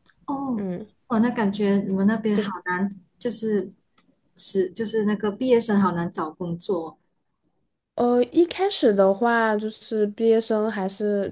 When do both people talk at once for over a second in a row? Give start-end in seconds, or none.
none